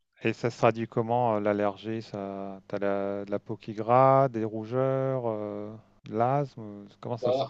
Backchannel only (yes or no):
no